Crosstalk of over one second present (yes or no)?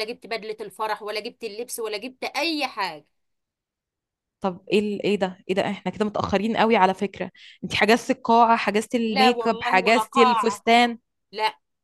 yes